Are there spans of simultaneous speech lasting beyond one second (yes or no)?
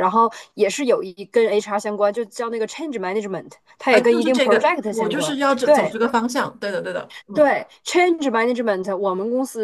yes